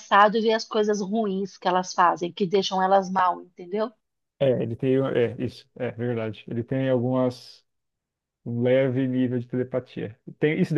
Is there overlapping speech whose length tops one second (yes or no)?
no